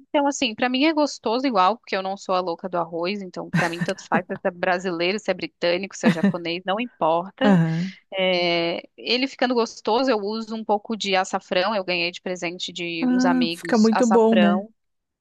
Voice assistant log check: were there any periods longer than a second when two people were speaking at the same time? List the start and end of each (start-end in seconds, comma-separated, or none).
13.0-14.7